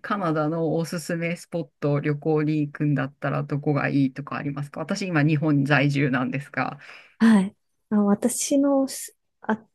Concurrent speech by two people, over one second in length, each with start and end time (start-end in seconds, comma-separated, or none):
none